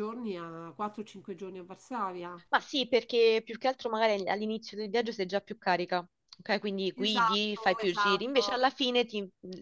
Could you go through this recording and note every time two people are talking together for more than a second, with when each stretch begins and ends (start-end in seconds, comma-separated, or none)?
7.0-8.6